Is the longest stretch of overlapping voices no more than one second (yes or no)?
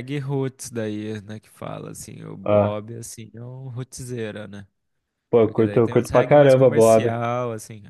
no